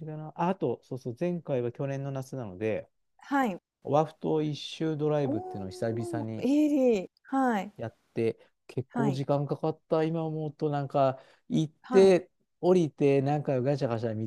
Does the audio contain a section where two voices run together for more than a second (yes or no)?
yes